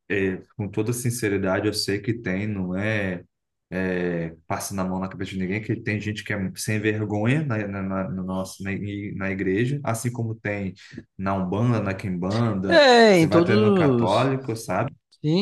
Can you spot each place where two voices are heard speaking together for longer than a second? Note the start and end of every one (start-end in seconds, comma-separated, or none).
12.7-14.3